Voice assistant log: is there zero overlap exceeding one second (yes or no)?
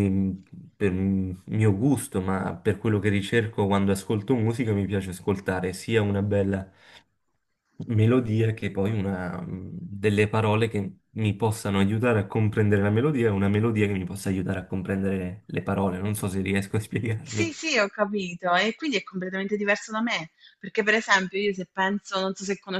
yes